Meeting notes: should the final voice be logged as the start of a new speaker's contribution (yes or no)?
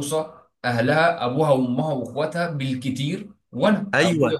yes